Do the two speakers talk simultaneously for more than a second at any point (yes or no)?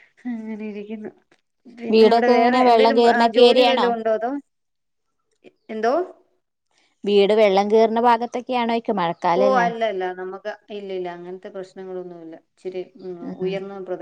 yes